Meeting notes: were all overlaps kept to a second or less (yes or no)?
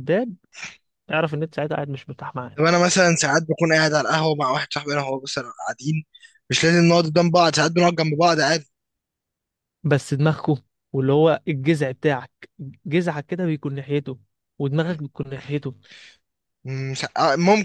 yes